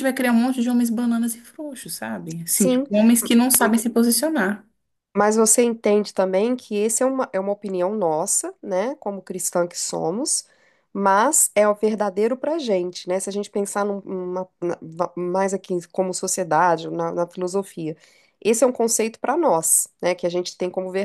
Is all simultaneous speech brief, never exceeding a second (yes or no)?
yes